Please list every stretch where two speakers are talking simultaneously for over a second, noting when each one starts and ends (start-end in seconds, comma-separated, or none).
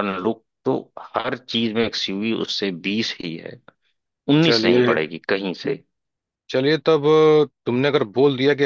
none